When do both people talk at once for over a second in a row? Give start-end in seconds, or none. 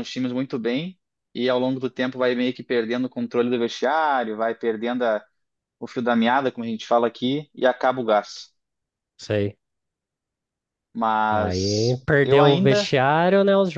11.3-12.9